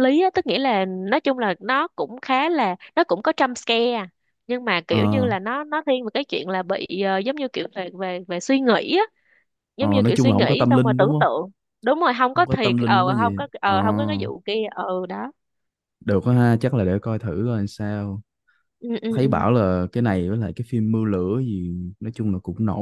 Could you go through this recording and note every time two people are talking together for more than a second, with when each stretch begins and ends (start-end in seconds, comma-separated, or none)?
9.8-11.2, 12.3-13.7